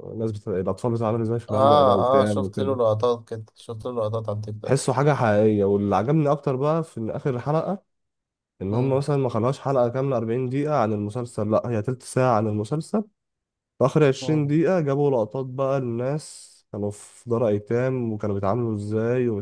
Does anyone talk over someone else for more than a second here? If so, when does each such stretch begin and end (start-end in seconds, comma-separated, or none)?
1.5-2.8